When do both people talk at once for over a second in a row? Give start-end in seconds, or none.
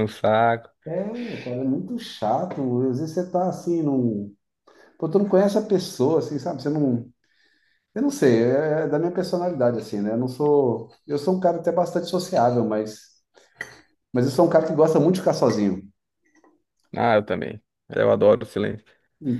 none